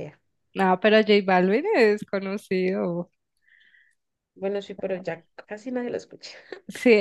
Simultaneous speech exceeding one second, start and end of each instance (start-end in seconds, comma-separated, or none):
none